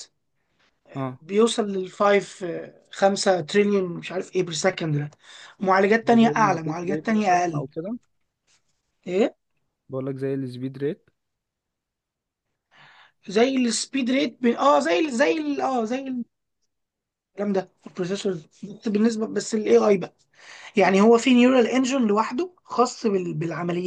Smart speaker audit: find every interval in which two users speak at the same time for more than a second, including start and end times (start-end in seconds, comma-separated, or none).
6.1-7.6